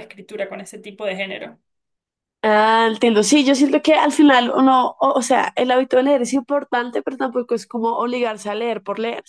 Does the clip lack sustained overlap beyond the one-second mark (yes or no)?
yes